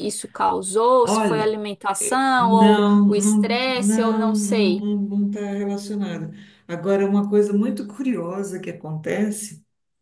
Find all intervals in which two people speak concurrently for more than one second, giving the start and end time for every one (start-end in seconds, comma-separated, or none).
2.4-4.8